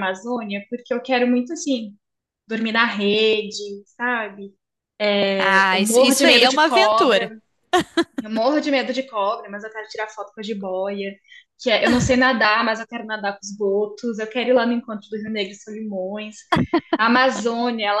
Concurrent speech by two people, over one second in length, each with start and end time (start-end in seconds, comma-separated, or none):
5.7-7.3